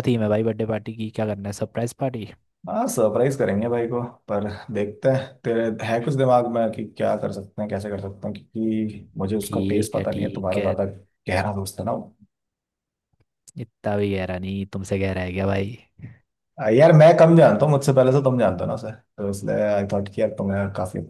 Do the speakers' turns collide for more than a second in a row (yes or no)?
yes